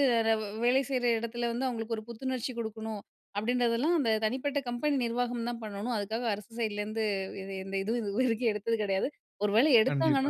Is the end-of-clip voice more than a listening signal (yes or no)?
no